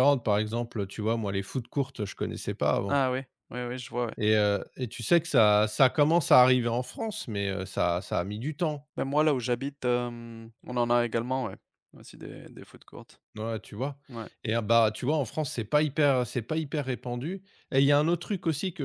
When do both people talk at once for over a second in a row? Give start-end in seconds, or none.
none